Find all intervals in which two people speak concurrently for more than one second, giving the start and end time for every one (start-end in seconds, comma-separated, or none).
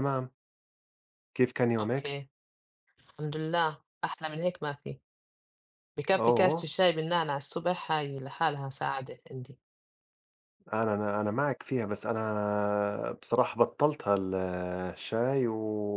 none